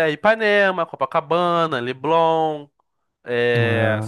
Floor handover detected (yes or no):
no